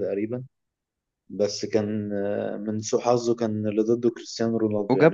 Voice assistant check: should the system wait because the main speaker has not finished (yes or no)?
no